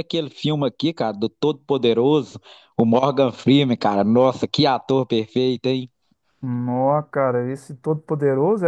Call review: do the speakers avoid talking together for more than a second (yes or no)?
yes